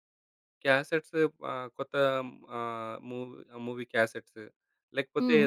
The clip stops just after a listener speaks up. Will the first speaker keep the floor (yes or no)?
yes